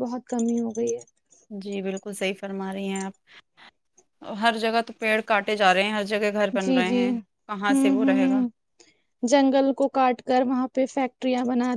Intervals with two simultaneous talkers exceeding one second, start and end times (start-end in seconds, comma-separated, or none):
6.6-8.4